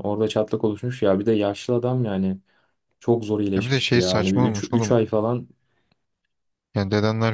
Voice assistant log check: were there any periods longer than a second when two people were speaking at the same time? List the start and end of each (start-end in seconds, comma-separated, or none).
3.6-4.9